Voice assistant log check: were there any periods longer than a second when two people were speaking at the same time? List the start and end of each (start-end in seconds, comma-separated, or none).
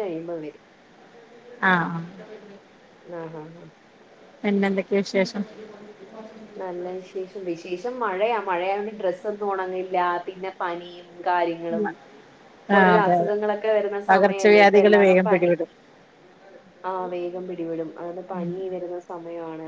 14.1-15.5